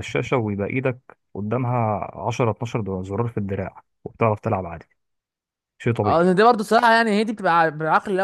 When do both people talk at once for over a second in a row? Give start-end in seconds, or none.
none